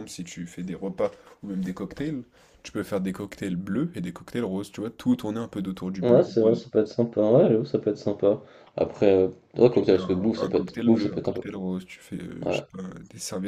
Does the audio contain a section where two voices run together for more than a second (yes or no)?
yes